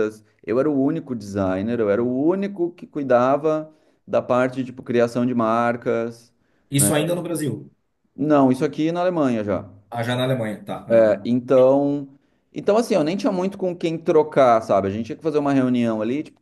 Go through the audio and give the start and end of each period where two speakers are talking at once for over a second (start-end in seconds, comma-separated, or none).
none